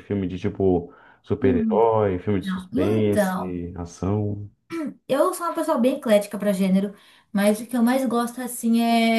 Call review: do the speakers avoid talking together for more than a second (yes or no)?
no